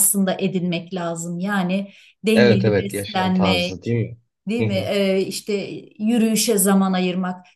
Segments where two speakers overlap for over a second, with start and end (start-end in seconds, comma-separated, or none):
2.3-3.9